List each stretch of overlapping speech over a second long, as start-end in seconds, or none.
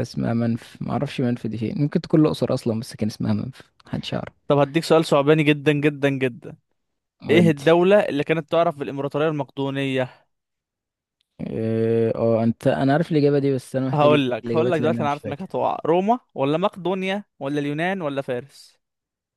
13.9-15.5